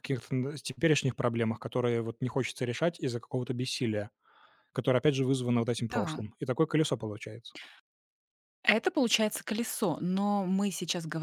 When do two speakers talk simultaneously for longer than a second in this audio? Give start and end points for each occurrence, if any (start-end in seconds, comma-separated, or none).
none